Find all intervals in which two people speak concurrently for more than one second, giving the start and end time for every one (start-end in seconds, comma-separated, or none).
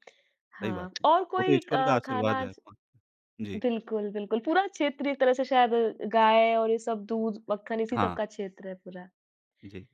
0.6-2.6